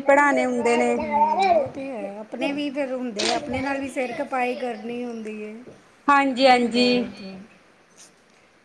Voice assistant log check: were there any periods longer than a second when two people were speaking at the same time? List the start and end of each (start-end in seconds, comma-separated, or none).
none